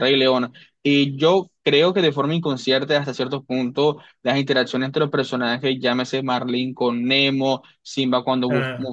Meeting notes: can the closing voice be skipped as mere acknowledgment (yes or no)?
yes